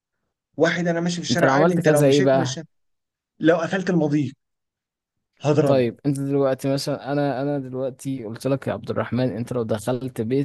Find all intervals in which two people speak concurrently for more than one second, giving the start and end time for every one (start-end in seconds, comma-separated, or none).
1.3-2.6